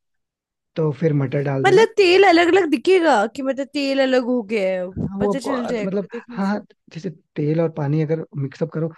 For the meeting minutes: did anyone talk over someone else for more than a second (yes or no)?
yes